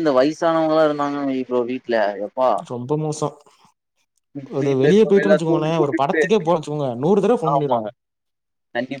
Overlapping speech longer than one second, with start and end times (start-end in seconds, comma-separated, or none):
4.6-6.2